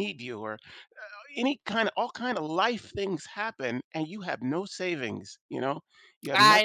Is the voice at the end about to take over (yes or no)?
yes